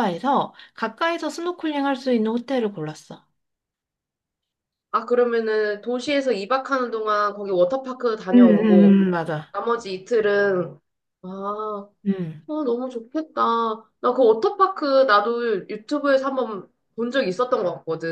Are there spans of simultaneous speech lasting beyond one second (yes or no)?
no